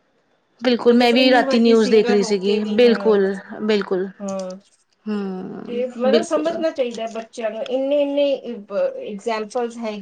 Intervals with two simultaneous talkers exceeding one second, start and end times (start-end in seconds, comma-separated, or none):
0.8-3.0